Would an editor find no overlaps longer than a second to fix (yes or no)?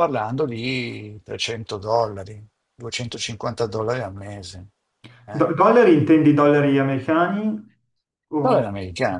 yes